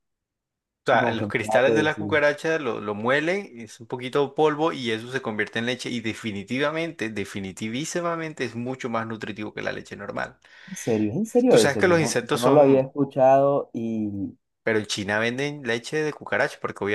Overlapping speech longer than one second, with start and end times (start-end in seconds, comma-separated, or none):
0.9-2.1, 11.5-12.9